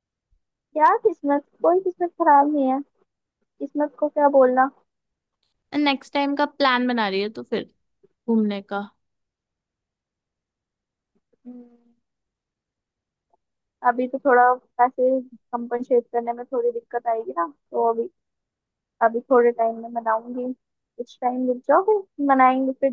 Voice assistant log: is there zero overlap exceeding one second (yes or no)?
yes